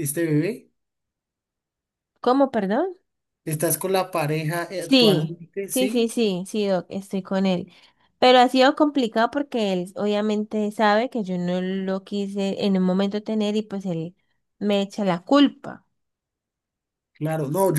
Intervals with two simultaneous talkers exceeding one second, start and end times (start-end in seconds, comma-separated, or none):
4.8-6.1